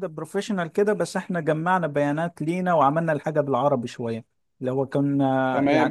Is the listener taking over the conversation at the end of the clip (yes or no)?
yes